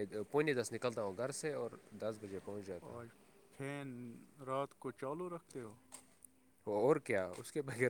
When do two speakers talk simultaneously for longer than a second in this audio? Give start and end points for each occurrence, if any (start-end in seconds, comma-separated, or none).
none